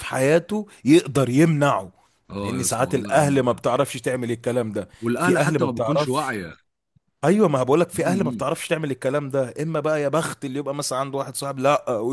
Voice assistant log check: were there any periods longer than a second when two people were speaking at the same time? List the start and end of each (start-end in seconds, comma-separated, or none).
2.4-3.6, 5.0-6.3